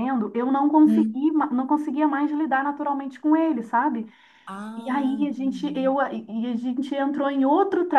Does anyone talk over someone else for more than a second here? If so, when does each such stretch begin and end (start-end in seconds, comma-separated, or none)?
4.8-6.0